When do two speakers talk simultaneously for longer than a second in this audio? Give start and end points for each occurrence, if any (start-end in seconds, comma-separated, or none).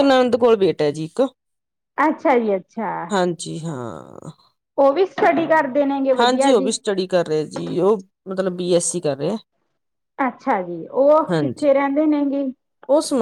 none